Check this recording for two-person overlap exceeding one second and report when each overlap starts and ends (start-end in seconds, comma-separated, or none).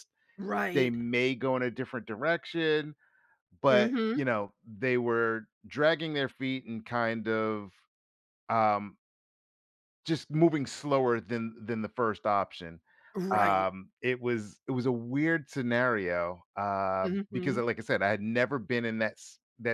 none